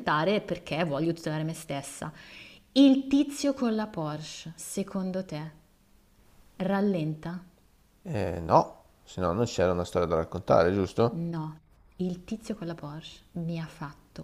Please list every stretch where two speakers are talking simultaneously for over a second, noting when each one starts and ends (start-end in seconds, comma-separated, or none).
none